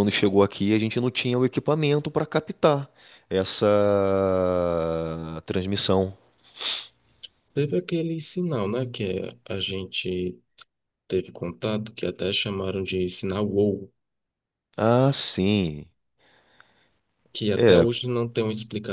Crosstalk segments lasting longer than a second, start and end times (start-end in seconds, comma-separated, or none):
none